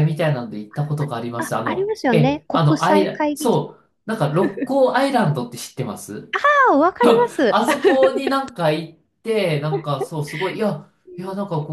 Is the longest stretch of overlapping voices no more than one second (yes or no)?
no